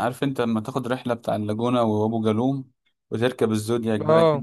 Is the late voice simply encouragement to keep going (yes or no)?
yes